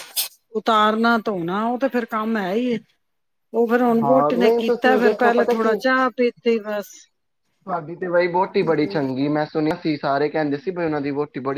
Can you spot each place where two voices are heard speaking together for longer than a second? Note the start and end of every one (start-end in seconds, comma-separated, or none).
4.0-5.8